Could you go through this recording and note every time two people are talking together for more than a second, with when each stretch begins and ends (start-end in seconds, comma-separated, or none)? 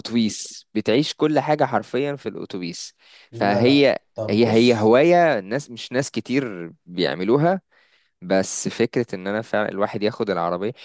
3.3-4.9